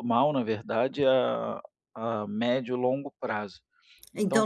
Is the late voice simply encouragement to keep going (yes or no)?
no